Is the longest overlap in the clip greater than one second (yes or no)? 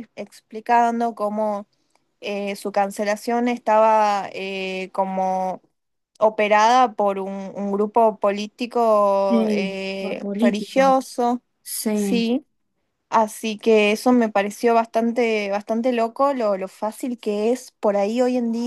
yes